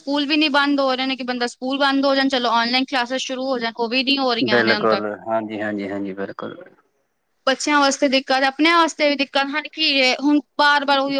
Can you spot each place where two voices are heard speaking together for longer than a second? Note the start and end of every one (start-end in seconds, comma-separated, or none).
none